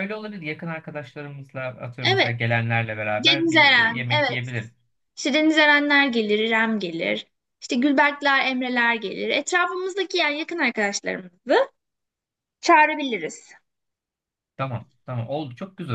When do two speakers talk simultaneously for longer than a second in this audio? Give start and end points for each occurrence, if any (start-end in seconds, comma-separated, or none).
3.1-4.5